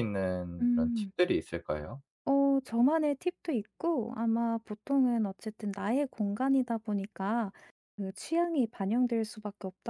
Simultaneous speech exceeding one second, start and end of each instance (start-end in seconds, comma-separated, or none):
none